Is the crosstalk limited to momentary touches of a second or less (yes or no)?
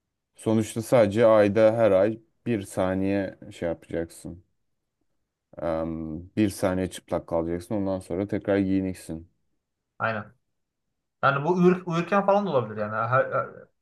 yes